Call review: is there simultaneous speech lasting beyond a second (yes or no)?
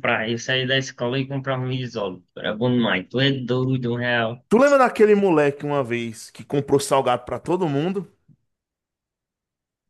no